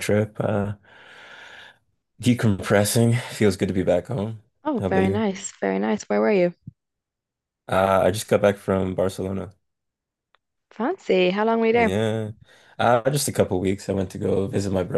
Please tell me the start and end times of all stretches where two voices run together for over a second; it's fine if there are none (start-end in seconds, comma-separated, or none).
none